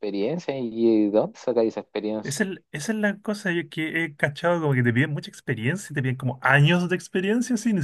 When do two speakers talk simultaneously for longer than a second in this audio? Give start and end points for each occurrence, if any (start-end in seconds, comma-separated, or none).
none